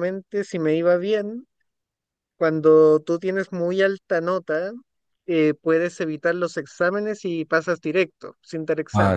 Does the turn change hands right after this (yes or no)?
yes